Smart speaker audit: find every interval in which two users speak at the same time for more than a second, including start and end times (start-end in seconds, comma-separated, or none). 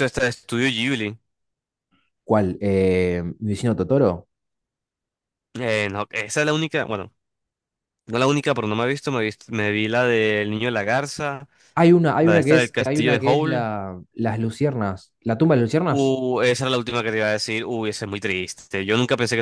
12.2-13.7